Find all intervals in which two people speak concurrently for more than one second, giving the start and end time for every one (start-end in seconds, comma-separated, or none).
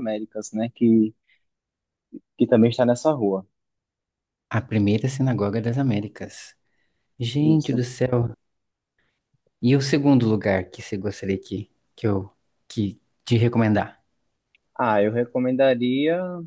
none